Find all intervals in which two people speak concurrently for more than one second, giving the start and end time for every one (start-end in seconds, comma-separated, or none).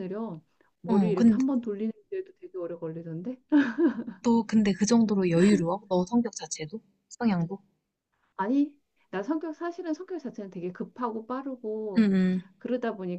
none